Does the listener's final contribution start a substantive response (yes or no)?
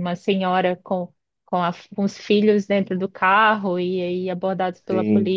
no